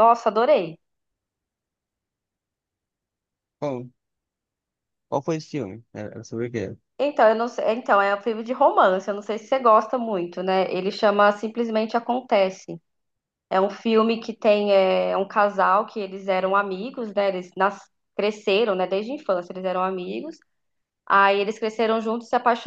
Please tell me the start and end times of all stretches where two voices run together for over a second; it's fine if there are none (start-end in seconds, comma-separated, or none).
none